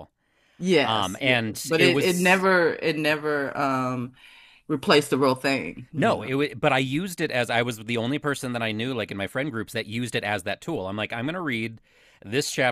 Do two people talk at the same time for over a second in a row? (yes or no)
yes